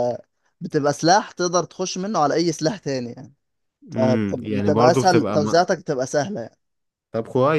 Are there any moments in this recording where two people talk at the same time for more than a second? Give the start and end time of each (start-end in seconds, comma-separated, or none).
4.0-5.5